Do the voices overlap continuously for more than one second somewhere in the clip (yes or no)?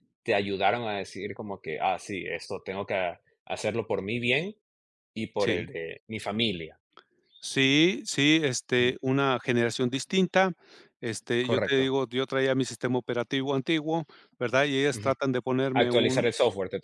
no